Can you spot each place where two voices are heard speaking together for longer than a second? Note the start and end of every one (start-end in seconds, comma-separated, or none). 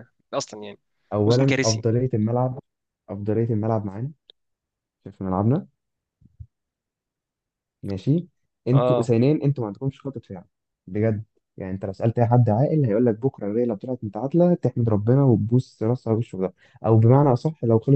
none